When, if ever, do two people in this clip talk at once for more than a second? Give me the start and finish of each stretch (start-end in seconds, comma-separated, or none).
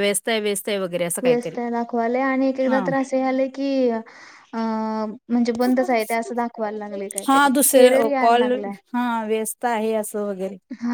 none